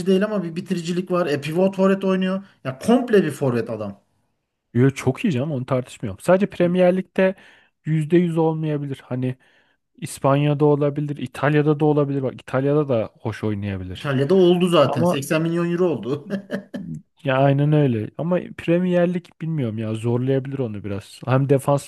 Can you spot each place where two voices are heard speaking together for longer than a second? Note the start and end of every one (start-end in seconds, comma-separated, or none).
none